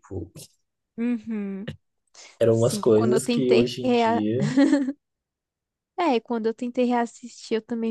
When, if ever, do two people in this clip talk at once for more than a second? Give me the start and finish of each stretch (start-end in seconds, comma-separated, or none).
2.5-4.2